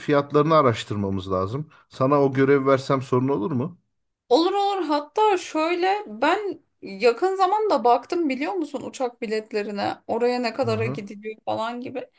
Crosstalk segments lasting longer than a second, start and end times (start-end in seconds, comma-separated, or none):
none